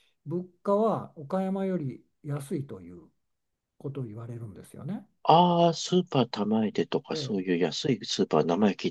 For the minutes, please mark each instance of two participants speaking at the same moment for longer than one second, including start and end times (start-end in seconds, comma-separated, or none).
none